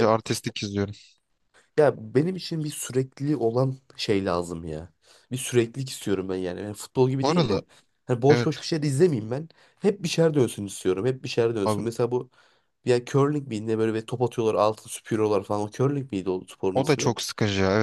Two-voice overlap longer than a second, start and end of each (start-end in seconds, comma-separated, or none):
none